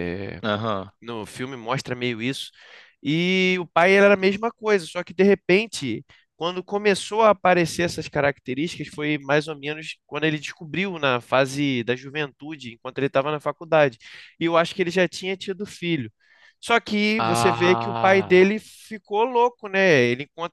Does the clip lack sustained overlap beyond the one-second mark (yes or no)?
no